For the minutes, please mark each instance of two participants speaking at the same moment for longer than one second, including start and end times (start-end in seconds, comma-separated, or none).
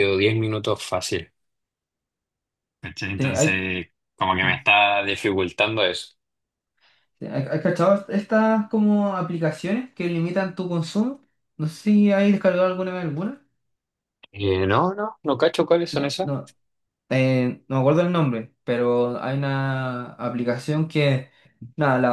none